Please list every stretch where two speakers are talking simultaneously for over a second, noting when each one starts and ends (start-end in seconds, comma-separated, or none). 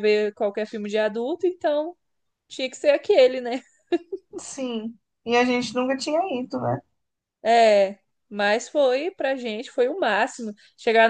none